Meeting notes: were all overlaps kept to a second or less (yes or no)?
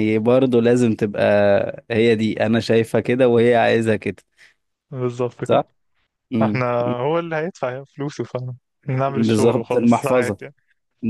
no